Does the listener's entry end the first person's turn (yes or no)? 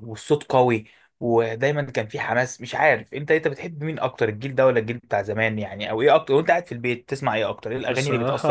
yes